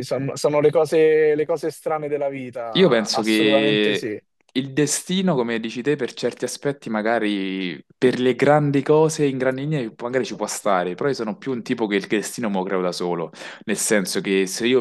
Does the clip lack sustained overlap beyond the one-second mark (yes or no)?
no